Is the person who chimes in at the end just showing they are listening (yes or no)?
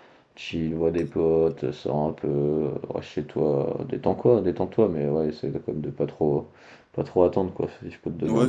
no